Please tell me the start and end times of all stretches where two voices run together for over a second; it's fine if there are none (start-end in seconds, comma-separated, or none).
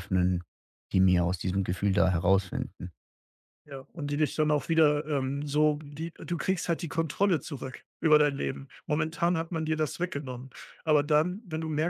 none